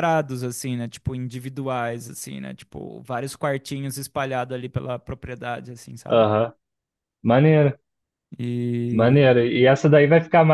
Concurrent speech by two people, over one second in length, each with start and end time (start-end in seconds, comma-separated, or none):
none